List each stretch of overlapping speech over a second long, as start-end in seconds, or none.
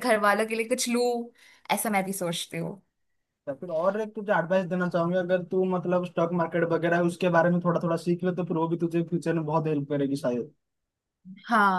none